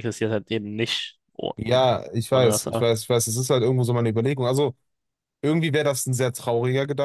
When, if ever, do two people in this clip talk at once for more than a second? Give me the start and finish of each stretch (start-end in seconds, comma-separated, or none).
none